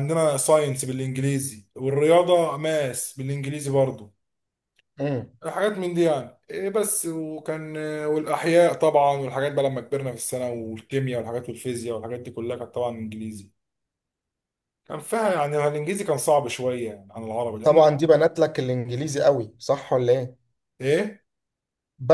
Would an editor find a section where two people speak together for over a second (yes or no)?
no